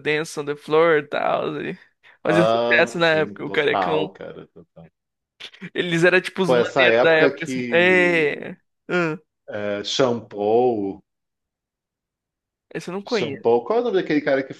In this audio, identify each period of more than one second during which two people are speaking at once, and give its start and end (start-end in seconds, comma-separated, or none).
2.2-4.1, 6.4-8.4